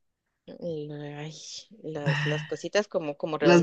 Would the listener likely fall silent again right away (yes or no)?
no